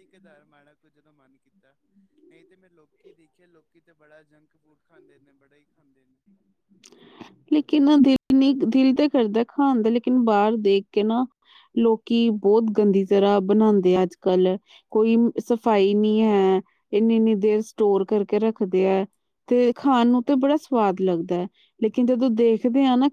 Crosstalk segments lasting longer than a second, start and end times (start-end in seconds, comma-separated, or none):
none